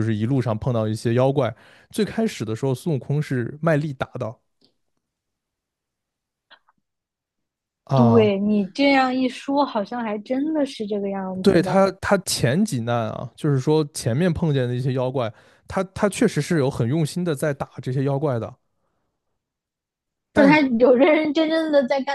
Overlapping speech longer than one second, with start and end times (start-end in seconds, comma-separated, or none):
none